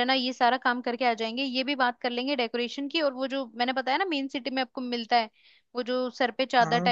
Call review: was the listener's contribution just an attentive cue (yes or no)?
yes